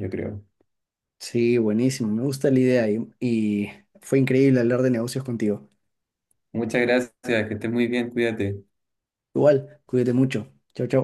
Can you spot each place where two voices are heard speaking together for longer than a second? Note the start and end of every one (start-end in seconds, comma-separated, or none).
none